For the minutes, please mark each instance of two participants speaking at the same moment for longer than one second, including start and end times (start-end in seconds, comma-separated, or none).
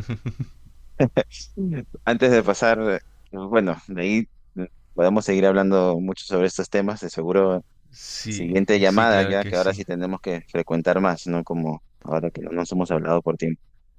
8.3-9.8